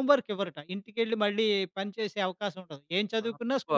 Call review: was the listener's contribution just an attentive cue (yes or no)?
no